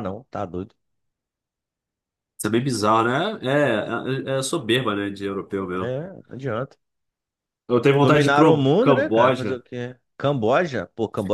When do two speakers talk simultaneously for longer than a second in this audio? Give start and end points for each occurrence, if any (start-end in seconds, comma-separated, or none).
8.0-9.6